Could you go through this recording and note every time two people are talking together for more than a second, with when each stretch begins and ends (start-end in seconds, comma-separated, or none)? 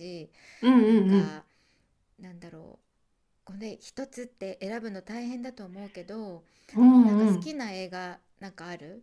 none